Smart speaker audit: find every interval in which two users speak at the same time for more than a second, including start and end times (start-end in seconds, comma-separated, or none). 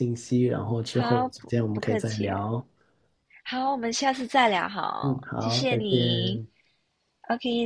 0.9-2.4, 5.0-6.4